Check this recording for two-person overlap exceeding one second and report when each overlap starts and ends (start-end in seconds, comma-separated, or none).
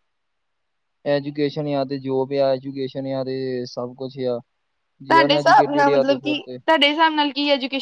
none